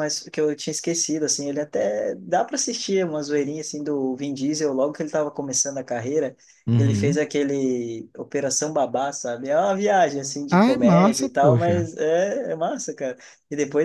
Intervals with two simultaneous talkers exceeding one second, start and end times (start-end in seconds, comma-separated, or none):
10.5-11.9